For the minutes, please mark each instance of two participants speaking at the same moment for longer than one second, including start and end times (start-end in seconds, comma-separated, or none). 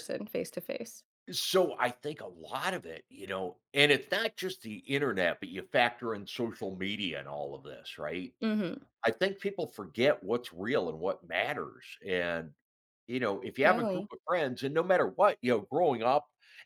none